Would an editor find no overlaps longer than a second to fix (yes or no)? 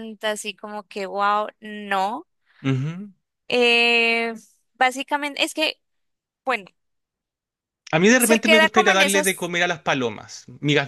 no